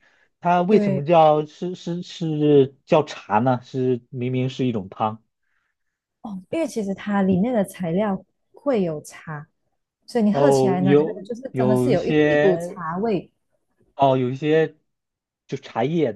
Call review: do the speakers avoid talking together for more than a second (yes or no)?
no